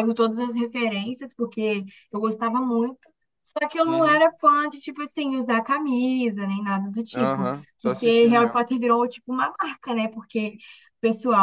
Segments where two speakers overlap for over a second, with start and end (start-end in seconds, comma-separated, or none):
7.1-8.6